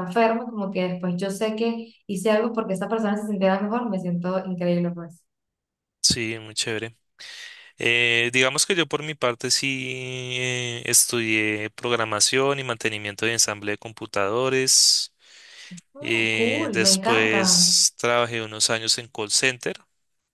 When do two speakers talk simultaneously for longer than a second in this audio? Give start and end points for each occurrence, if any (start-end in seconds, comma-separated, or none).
16.0-17.4